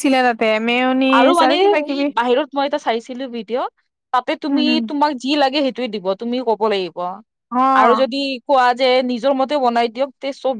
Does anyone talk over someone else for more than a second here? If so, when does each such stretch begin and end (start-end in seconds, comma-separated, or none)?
none